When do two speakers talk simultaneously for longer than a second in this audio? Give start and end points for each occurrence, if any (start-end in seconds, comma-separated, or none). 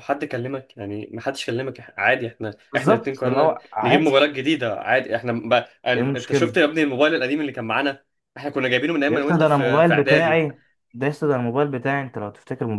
2.7-4.2, 9.1-10.4